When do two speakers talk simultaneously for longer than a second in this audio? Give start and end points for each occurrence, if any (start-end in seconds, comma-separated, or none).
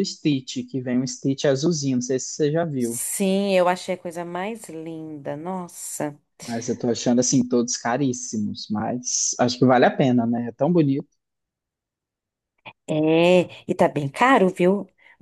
none